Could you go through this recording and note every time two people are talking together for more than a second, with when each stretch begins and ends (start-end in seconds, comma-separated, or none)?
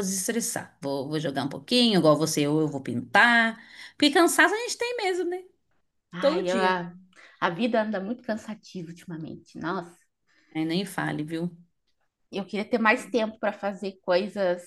none